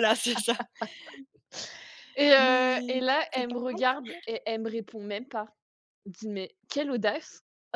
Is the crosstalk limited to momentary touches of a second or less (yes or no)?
no